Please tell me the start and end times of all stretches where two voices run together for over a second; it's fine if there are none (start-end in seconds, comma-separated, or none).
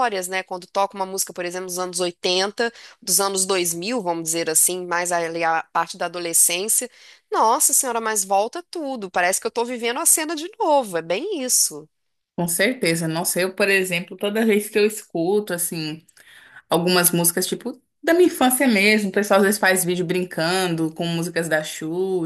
none